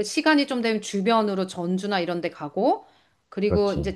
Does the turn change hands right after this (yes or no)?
no